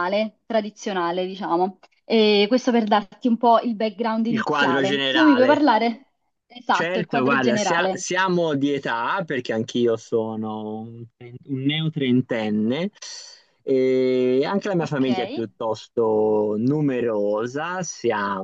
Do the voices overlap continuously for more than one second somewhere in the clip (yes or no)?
yes